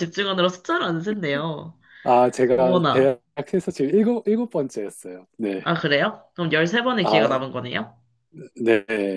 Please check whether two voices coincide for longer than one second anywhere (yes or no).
no